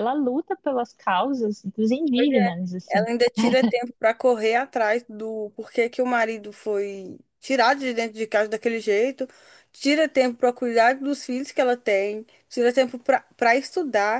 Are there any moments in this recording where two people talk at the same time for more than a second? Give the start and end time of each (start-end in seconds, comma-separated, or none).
none